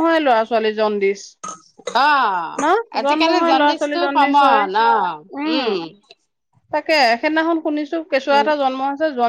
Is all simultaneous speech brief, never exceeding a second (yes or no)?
no